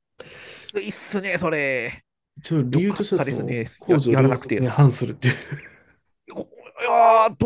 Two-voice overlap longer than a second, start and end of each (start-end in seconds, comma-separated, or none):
2.7-4.7